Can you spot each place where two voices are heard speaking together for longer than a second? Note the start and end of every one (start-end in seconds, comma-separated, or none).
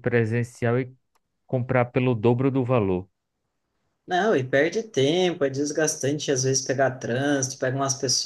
none